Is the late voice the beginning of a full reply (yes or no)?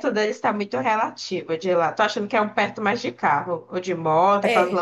yes